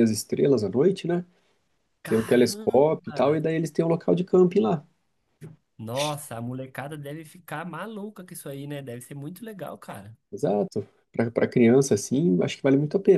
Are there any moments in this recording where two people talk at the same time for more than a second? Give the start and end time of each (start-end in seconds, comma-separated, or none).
2.1-3.3